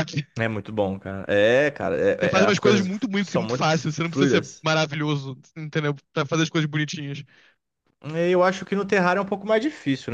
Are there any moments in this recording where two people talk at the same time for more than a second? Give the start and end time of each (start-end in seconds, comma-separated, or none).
2.2-4.7